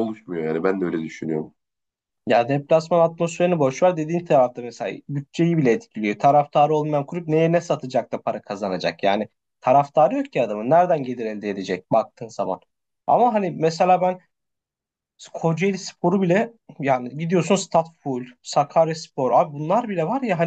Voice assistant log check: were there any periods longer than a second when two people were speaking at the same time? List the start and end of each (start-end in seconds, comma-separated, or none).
none